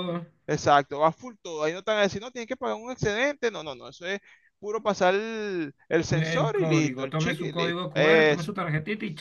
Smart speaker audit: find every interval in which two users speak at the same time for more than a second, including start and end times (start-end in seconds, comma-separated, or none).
6.1-8.5